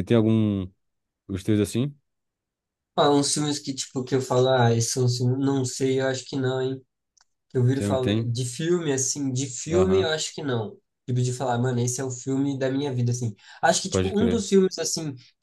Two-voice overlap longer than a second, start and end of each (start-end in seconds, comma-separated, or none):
none